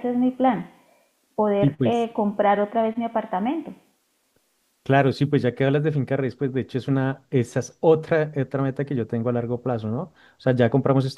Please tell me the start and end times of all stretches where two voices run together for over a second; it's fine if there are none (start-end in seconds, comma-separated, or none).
none